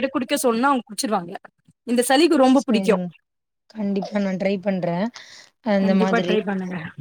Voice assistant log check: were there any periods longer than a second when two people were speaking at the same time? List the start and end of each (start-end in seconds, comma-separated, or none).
none